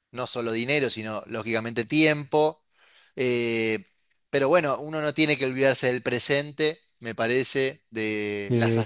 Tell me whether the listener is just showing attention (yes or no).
yes